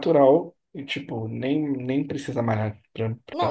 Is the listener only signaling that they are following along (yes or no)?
no